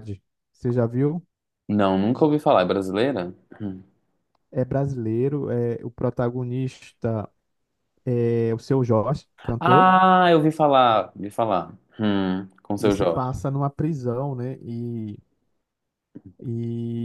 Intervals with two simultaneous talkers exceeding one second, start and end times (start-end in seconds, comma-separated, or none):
none